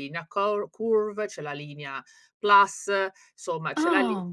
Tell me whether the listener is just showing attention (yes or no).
yes